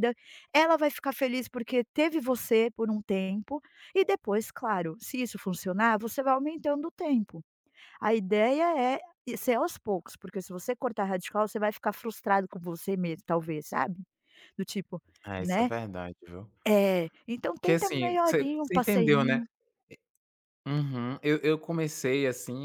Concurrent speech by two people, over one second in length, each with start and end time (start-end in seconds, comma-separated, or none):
17.5-19.4